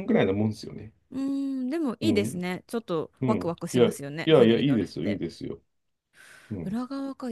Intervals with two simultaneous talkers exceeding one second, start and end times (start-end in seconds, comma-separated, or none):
3.2-5.2